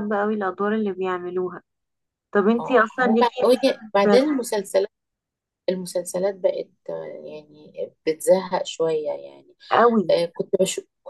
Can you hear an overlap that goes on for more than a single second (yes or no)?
yes